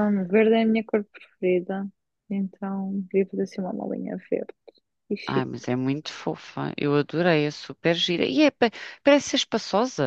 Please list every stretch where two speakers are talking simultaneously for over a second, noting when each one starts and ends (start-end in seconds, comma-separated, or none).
none